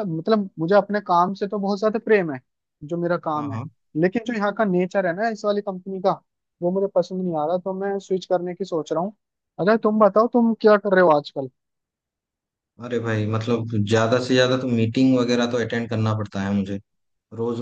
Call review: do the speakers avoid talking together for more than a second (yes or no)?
yes